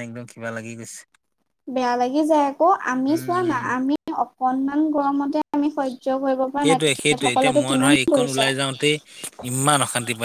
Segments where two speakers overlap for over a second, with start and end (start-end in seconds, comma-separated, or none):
6.6-8.5